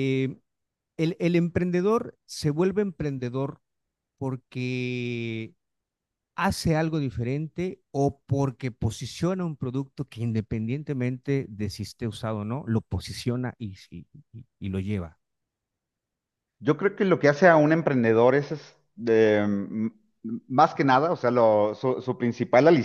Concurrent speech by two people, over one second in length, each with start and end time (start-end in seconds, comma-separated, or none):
none